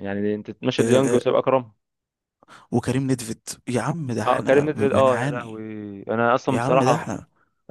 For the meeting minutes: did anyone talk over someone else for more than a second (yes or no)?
yes